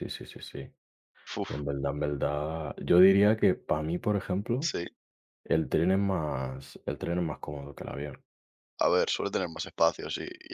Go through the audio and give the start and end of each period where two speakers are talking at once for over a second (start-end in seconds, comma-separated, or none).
none